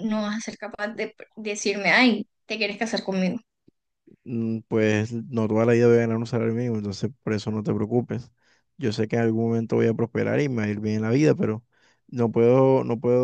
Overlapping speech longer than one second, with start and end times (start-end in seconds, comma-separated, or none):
none